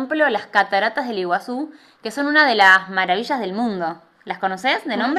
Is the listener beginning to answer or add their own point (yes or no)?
yes